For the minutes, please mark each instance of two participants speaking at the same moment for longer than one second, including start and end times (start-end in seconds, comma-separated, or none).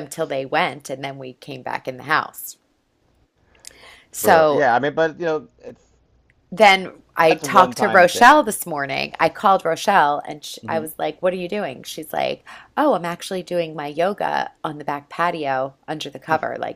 7.2-8.5